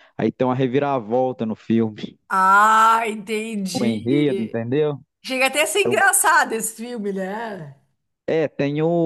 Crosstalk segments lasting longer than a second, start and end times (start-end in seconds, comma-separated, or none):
none